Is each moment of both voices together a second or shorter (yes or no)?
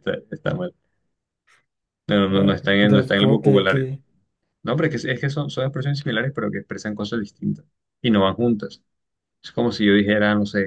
no